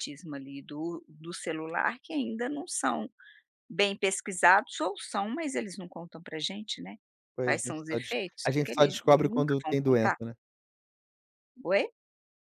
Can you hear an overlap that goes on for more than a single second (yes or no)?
yes